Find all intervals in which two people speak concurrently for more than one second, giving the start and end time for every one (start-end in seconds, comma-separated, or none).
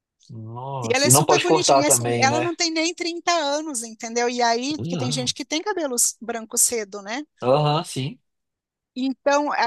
0.8-2.5